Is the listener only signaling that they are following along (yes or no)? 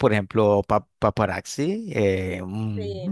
yes